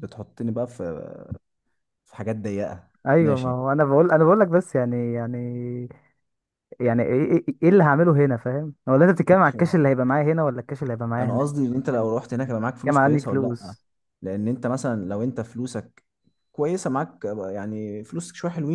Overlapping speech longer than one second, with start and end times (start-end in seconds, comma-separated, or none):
11.2-13.7